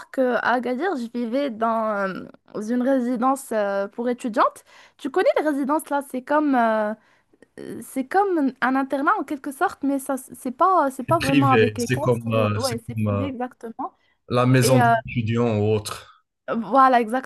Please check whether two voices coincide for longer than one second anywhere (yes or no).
yes